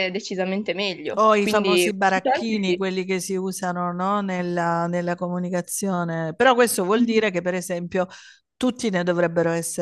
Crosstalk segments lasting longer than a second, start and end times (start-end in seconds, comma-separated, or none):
1.1-2.8